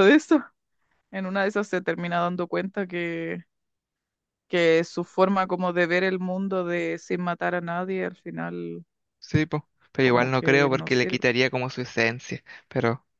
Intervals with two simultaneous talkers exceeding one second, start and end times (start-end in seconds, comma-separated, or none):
10.0-11.2